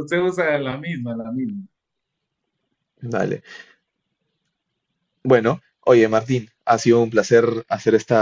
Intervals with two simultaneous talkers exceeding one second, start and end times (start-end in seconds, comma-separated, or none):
none